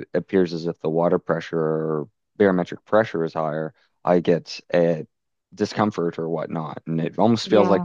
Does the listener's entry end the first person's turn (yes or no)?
no